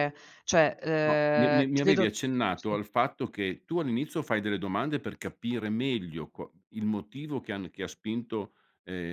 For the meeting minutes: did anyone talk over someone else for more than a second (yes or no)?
yes